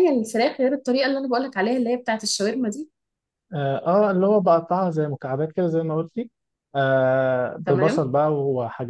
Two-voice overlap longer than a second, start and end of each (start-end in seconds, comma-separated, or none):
none